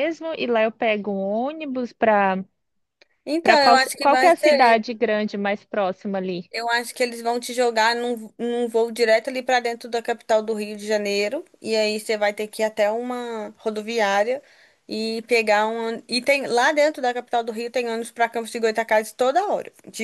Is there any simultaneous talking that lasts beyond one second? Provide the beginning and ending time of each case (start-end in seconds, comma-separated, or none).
3.4-4.8